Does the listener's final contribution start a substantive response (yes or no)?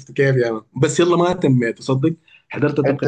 no